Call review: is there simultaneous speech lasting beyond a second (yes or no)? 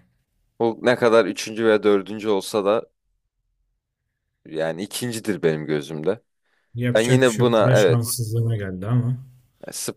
yes